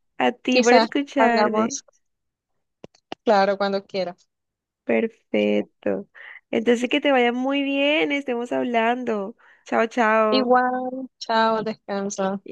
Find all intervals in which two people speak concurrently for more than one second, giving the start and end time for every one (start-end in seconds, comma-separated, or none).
0.5-1.8